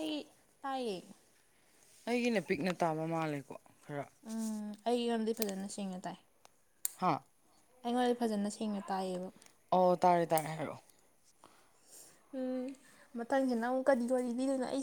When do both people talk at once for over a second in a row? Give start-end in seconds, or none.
none